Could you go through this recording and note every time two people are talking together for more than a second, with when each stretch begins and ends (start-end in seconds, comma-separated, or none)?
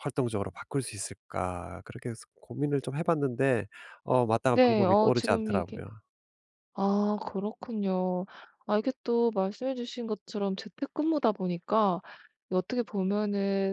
4.5-5.8